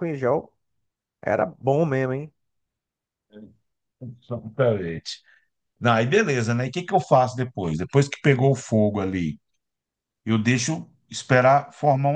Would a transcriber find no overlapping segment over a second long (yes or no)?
yes